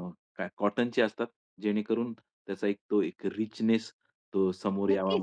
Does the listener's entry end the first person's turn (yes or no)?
yes